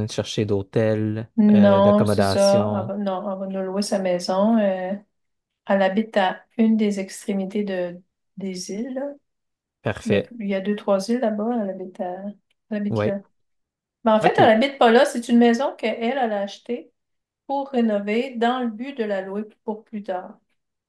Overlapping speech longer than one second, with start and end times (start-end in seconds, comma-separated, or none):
1.4-2.9